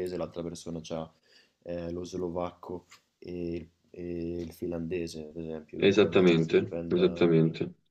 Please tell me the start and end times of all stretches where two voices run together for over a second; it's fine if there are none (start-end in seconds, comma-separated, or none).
5.8-7.3